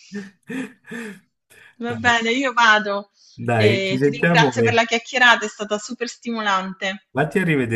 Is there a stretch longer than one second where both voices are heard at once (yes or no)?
yes